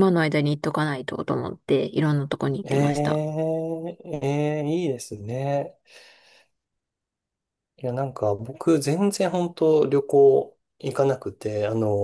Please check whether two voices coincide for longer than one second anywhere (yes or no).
no